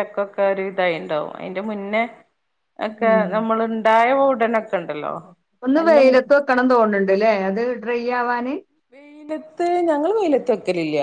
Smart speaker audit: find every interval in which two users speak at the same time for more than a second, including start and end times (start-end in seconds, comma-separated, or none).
none